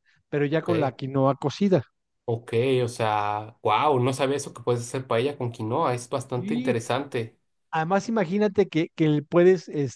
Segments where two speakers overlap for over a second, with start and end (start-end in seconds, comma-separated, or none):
none